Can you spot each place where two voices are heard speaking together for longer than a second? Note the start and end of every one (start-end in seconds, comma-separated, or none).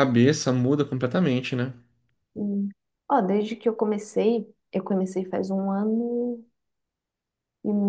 none